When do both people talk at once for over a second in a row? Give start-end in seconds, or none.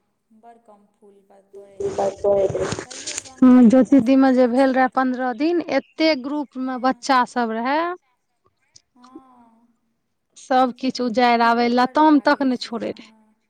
10.6-12.9